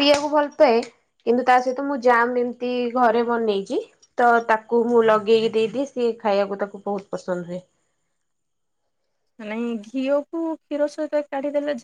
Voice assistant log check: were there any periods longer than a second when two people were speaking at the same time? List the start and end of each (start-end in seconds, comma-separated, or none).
none